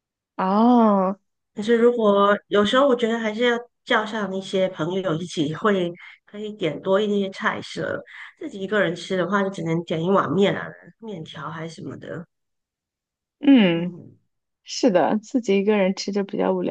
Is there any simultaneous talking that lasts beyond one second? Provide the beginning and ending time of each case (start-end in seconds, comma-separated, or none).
none